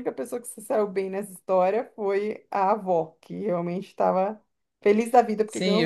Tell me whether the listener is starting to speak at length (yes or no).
yes